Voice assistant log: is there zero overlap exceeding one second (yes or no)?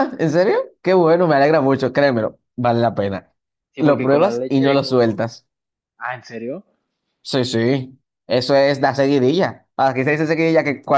no